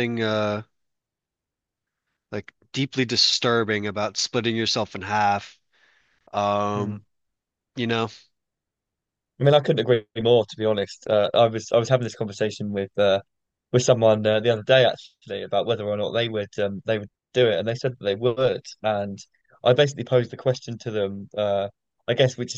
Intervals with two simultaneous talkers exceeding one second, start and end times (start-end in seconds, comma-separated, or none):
none